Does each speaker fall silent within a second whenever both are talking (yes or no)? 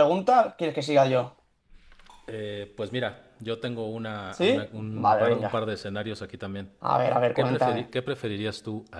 no